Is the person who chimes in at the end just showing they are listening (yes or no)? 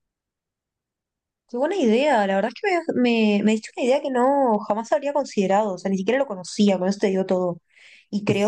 yes